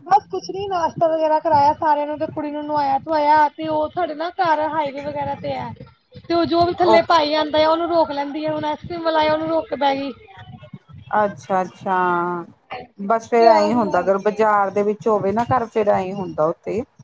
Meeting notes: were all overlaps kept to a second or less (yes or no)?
no